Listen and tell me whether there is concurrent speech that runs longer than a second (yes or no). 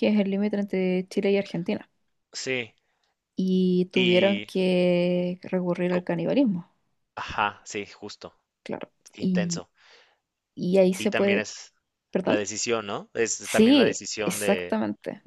yes